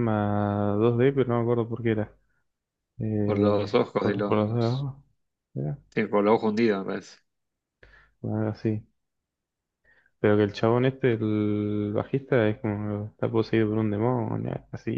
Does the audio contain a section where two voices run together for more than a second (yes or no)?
yes